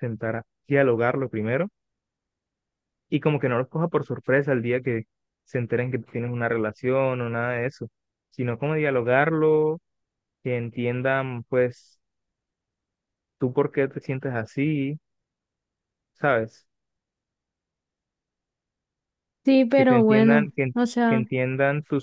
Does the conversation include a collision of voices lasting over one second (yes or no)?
yes